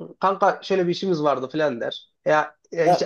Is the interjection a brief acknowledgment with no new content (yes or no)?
yes